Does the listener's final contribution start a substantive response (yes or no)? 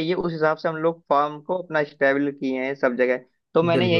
no